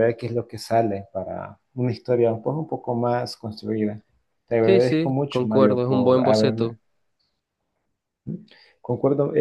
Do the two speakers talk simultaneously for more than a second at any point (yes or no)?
yes